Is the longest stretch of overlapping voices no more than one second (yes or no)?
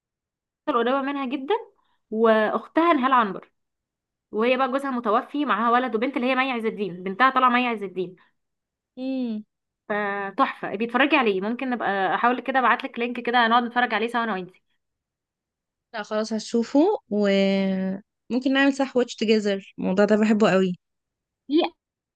yes